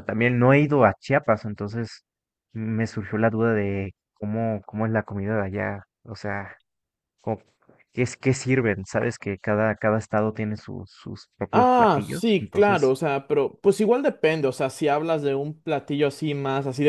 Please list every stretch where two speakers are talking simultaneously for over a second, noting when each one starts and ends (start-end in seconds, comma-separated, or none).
11.5-13.0